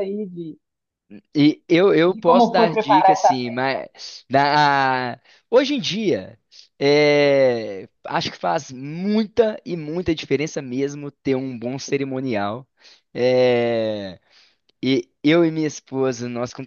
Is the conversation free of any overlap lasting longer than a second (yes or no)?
no